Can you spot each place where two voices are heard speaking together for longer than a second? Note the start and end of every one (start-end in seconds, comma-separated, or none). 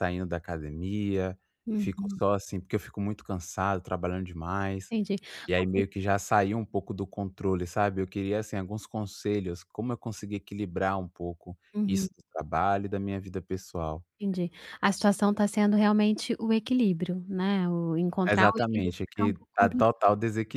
18.3-20.0